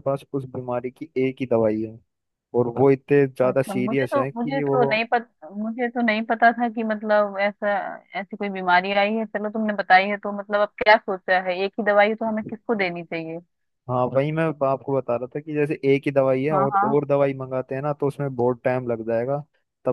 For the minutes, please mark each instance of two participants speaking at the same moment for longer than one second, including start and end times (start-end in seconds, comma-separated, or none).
3.4-4.8